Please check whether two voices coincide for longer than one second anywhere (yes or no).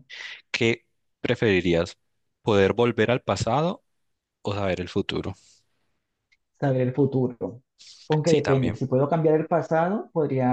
no